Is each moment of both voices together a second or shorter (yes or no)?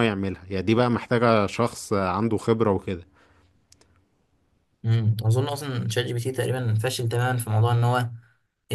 yes